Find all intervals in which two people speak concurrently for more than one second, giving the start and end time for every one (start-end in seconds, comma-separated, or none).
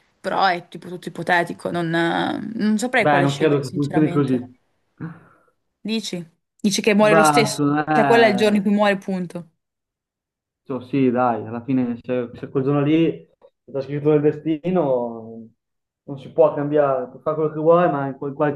3.0-4.4, 7.0-8.6